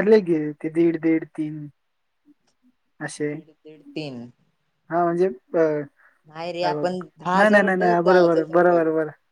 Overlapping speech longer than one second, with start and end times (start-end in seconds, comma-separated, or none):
7.3-8.8